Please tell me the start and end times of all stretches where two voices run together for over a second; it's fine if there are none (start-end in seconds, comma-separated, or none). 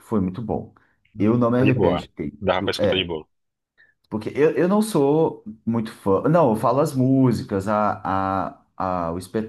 1.2-3.1